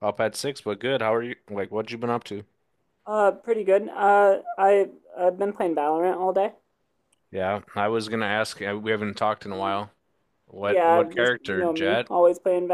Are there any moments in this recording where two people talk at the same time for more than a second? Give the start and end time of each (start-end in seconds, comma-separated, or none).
10.6-12.1